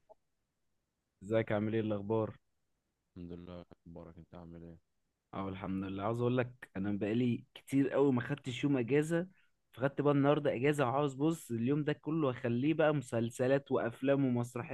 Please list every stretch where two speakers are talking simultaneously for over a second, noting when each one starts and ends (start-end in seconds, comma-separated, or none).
none